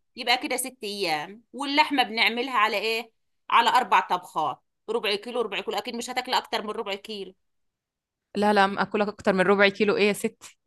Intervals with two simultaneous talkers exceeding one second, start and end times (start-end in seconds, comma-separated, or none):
none